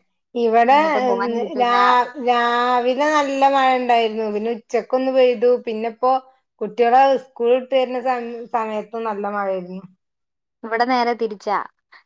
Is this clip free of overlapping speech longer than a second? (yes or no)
yes